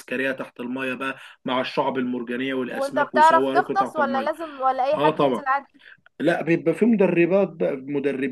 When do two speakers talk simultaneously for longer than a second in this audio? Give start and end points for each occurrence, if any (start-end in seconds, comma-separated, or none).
2.7-4.3